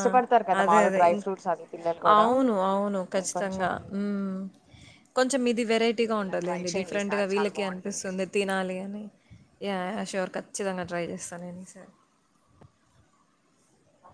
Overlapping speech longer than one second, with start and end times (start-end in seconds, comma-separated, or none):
6.2-8.1